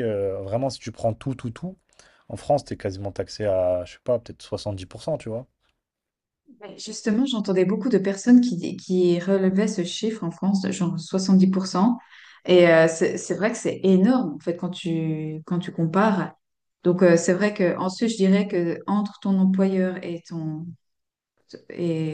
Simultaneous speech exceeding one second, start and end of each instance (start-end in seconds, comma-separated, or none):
none